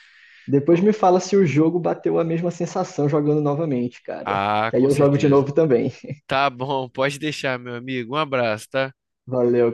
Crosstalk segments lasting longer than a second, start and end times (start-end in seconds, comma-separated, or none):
4.2-5.5